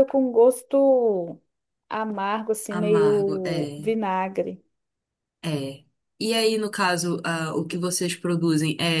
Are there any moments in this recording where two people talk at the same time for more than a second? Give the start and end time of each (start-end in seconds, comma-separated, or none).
2.7-3.9